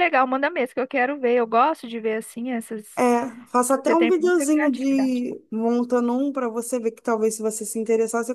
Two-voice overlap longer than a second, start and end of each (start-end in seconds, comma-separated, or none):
3.7-5.2